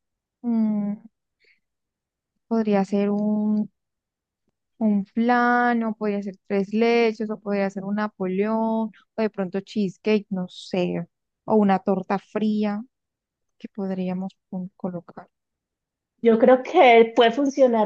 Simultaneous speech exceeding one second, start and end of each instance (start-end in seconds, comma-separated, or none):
none